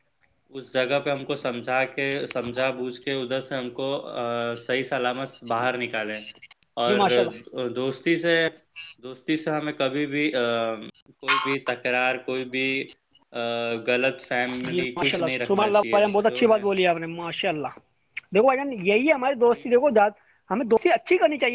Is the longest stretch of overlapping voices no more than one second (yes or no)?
no